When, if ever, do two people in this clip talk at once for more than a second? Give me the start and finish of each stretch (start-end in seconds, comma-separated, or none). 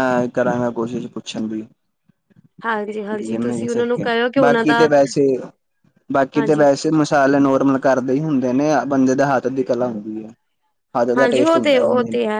3.3-4.9